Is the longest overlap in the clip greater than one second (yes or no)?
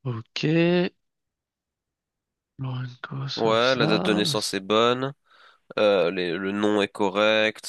yes